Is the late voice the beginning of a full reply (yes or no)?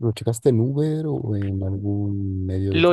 yes